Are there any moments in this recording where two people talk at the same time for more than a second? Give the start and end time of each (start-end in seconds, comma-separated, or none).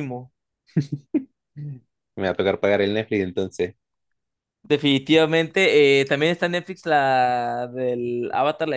none